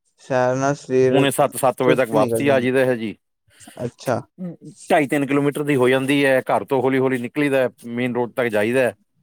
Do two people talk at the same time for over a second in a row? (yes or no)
yes